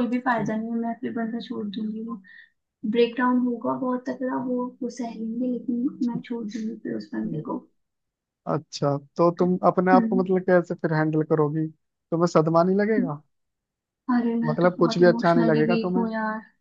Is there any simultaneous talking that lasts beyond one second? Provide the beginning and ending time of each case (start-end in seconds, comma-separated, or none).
14.4-16.1